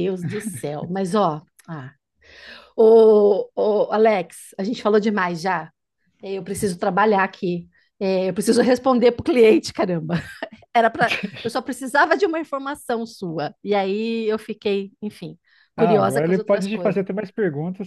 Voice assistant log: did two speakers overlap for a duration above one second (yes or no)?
yes